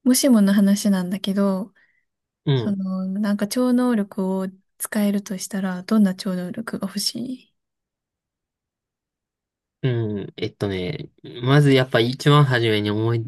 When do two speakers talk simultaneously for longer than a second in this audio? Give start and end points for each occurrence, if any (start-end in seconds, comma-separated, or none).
none